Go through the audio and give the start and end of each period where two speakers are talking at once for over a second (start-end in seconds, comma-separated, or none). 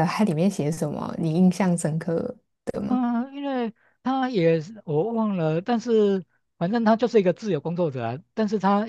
none